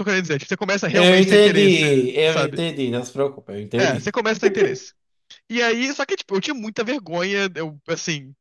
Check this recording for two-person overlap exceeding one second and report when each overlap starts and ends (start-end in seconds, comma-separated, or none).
0.9-2.6